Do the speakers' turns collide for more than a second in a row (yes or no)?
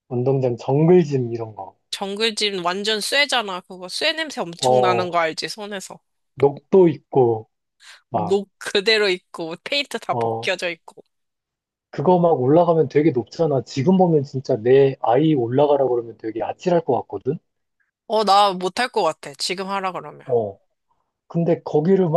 no